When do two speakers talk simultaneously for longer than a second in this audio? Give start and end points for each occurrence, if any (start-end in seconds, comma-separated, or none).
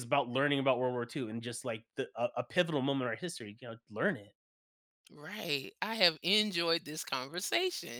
none